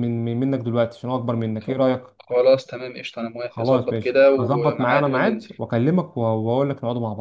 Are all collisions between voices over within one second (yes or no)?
no